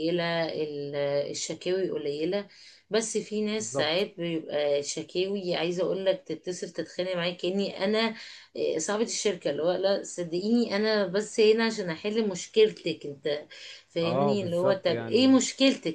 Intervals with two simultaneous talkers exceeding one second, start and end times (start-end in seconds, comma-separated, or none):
14.0-15.4